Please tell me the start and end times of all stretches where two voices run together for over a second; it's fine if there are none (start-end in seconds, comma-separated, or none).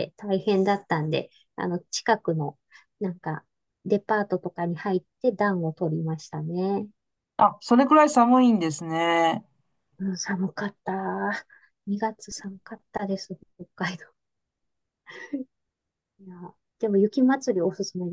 none